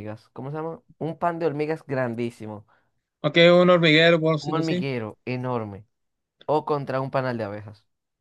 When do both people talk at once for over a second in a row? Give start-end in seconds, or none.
none